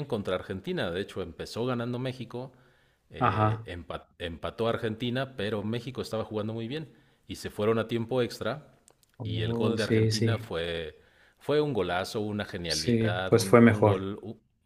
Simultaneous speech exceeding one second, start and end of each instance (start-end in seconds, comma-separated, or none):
9.2-10.4, 12.6-14.1